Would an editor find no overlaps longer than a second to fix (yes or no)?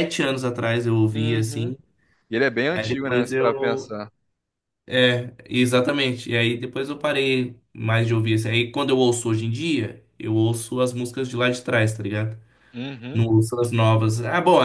no